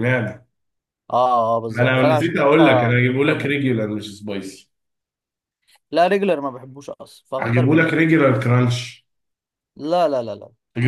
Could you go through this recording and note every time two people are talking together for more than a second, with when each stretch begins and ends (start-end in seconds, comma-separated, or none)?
1.7-3.5